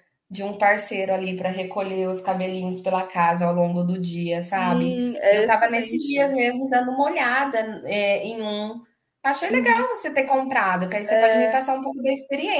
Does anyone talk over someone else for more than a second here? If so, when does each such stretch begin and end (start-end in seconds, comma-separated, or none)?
4.5-6.2